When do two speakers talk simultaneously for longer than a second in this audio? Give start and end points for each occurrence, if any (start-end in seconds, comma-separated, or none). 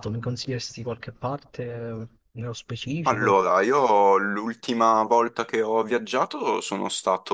none